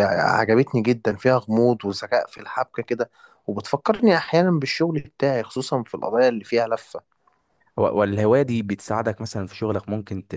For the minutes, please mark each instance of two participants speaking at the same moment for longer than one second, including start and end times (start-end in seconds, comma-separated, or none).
none